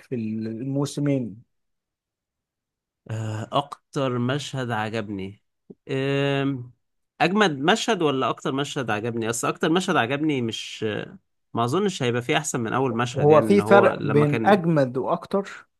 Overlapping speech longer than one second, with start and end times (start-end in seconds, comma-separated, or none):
13.1-14.6